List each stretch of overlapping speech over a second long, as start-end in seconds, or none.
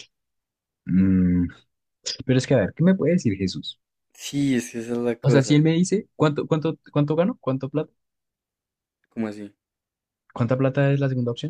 none